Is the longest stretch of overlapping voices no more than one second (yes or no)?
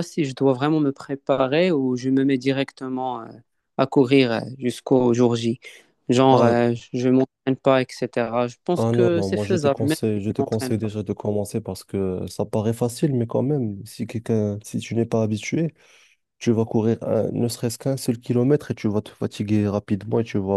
no